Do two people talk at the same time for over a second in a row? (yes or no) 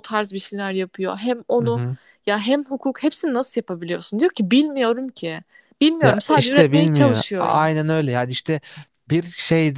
yes